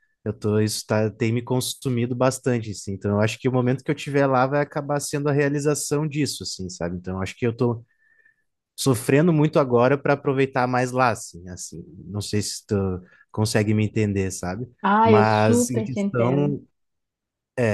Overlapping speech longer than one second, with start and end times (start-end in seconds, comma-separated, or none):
15.0-16.6